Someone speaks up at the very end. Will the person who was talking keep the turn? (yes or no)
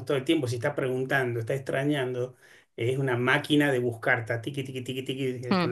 yes